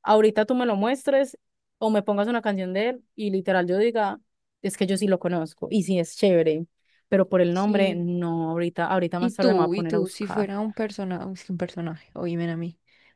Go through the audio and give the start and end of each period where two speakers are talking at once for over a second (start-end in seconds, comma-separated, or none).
9.2-10.5